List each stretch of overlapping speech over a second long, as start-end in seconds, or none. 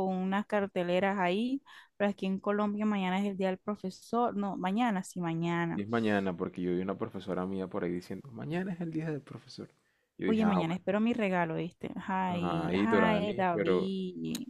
12.3-13.9